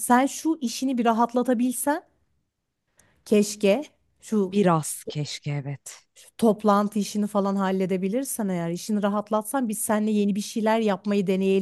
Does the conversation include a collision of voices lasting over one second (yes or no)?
no